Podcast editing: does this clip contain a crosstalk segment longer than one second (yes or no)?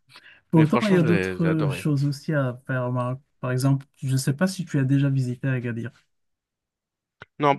yes